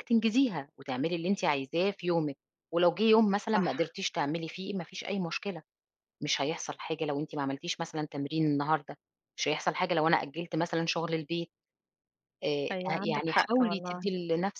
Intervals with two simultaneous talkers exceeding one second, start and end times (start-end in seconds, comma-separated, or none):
12.7-14.1